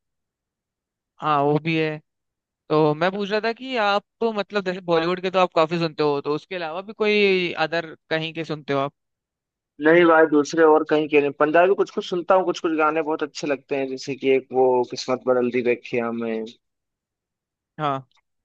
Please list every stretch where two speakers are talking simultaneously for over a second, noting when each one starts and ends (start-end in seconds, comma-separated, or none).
none